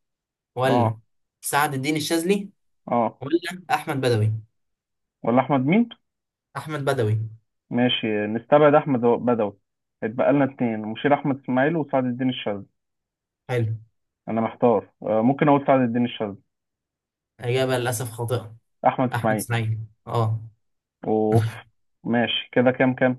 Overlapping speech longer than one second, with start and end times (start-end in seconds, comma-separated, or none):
none